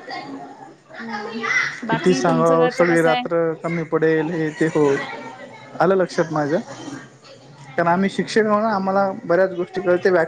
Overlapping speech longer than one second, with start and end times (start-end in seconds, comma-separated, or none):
1.9-3.3